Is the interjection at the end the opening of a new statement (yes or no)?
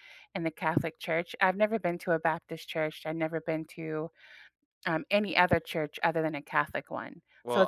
yes